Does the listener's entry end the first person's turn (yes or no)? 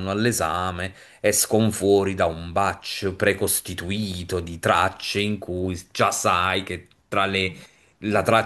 no